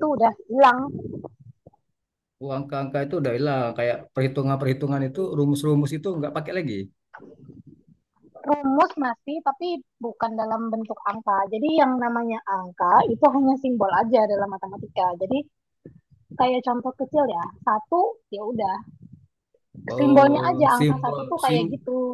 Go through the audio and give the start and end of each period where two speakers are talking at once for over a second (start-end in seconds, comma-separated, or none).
20.0-21.6